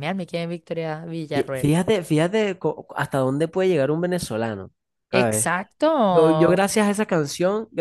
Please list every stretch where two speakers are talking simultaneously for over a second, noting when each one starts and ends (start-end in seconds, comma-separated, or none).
none